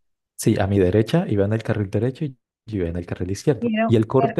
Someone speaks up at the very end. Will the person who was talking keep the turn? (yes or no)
yes